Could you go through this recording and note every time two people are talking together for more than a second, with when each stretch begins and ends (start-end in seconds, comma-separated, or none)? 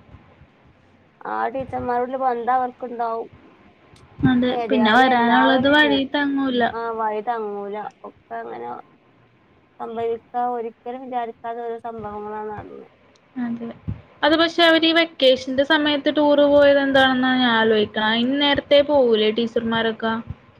4.6-6.0